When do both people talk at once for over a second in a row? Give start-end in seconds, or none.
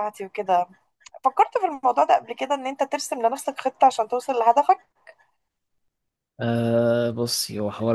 none